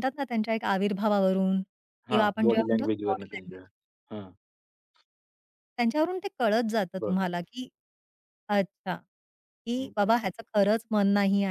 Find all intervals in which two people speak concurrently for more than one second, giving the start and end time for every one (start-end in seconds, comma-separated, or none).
2.1-3.6